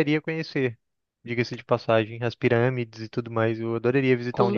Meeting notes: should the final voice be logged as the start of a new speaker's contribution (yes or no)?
yes